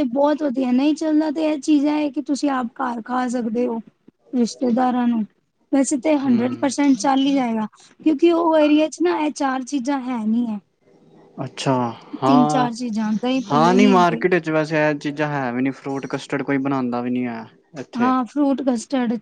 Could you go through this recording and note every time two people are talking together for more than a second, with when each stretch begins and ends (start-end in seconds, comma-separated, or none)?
12.5-14.2